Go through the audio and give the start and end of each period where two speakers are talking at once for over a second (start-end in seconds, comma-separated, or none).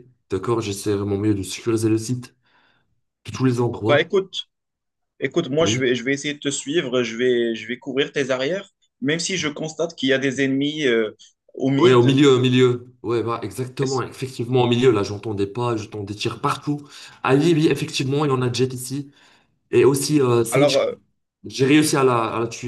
none